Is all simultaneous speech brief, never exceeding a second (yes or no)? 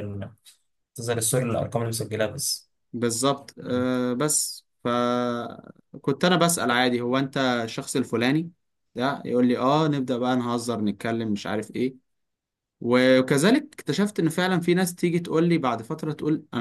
yes